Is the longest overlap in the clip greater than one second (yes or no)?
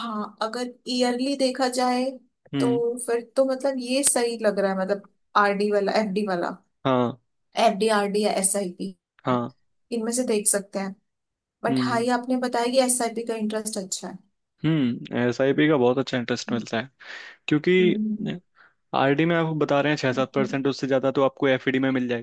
no